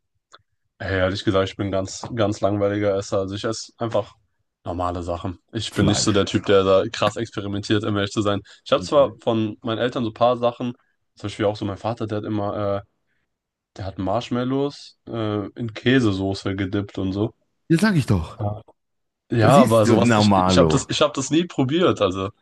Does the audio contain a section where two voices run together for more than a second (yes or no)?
yes